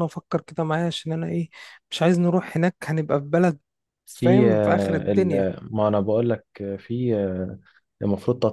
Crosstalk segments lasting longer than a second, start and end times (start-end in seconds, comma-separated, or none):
4.2-5.5